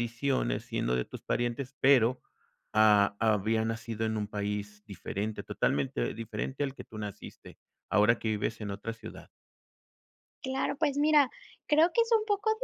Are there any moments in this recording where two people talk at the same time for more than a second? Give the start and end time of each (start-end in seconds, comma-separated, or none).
none